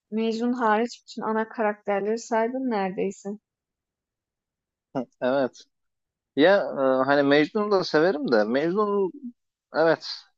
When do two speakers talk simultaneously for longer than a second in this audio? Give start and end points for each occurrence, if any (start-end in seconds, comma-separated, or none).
none